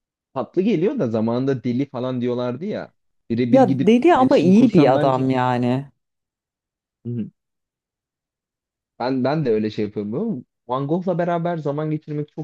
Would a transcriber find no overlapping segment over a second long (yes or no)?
no